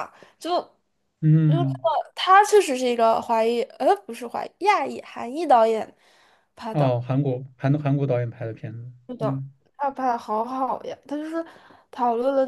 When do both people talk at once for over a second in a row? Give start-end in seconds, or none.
none